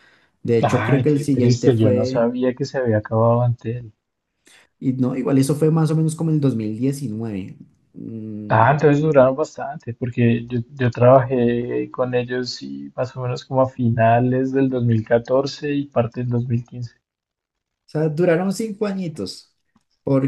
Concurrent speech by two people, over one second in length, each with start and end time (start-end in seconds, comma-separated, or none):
0.6-2.3